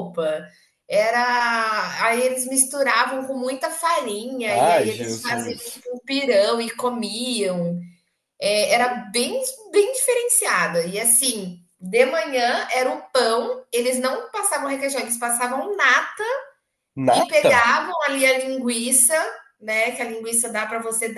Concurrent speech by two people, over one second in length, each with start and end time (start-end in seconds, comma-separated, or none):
4.5-5.9